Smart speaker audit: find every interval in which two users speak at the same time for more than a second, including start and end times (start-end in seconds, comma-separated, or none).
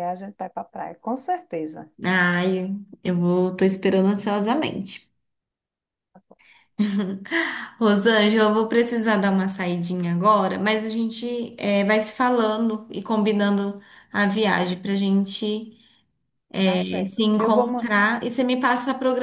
16.7-17.9